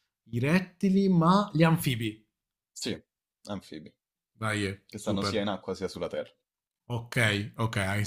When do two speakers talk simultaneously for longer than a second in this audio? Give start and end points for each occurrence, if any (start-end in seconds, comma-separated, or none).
none